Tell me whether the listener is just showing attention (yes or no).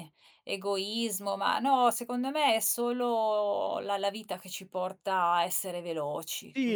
no